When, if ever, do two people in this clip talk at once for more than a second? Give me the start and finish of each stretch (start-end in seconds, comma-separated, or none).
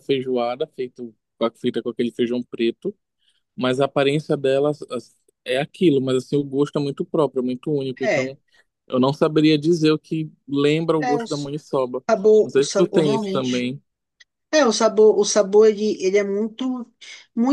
12.4-13.7